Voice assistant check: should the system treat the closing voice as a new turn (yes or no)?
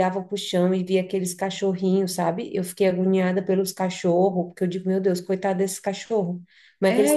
no